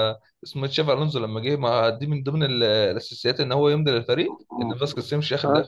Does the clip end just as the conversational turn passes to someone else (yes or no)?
yes